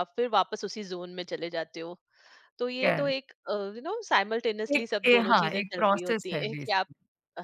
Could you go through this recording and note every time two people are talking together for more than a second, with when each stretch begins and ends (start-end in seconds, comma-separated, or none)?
4.8-6.9